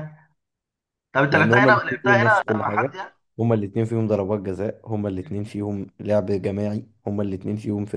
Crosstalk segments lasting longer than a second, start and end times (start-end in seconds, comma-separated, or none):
1.3-2.9